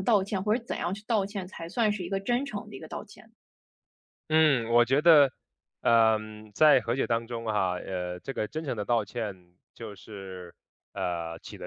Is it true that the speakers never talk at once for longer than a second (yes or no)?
yes